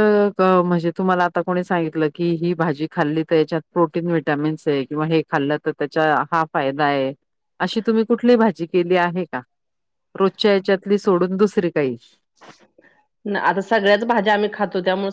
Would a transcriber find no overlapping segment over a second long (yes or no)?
yes